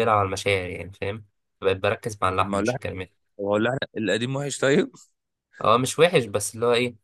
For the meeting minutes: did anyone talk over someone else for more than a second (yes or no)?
no